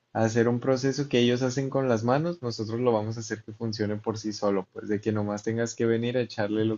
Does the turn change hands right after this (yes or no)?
no